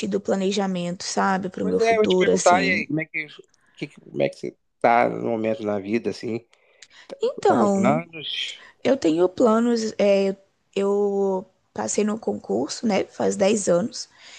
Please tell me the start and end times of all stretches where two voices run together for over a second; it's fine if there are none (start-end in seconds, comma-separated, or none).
1.6-2.9